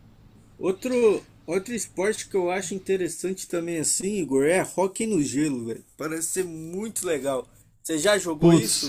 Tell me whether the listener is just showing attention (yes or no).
no